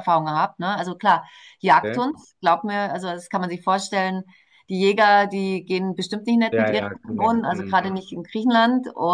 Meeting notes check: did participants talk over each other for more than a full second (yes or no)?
yes